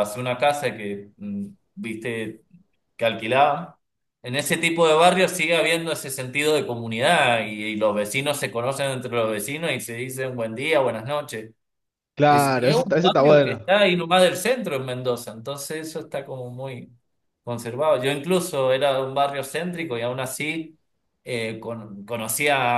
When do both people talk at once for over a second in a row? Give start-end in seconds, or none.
12.3-13.7